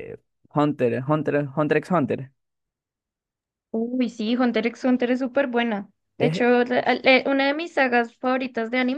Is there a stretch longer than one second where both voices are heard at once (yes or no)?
no